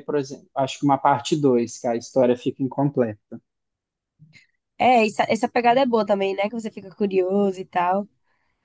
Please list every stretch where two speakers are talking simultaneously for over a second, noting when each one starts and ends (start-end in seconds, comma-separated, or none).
none